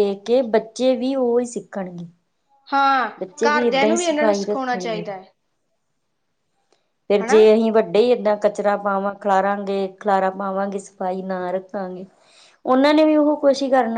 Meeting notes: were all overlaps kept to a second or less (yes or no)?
no